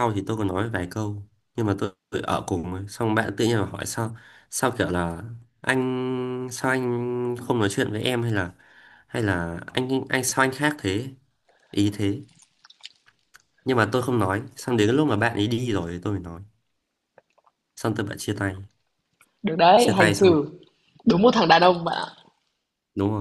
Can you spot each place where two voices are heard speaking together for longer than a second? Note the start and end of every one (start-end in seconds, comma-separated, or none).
none